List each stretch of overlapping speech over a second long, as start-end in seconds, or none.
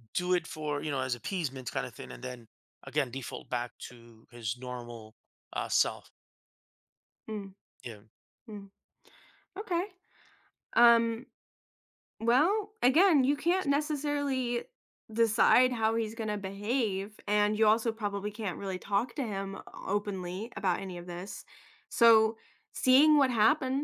none